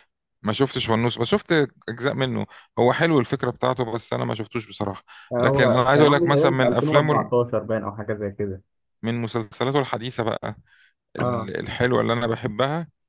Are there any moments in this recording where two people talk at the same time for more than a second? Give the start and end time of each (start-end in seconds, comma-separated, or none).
5.4-7.3